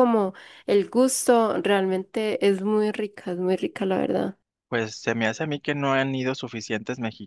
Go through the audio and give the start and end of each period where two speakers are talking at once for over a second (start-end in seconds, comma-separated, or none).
none